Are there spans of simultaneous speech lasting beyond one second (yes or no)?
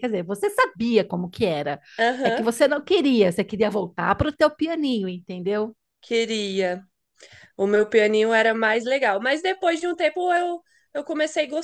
no